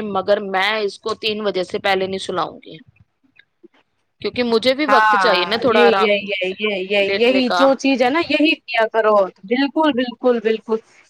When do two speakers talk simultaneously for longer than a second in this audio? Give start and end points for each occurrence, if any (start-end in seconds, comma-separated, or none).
4.9-6.2